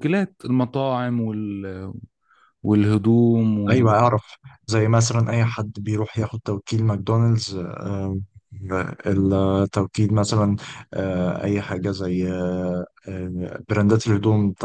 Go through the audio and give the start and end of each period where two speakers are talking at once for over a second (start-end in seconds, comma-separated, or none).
none